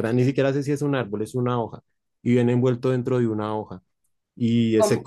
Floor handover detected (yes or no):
yes